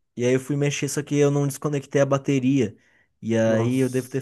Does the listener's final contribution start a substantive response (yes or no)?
no